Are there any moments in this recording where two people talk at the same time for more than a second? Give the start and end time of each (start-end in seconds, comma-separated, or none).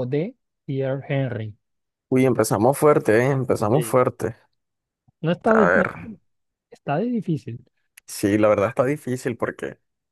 none